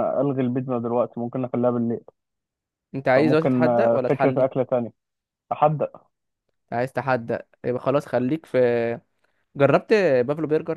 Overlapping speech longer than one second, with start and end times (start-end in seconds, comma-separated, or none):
3.1-4.5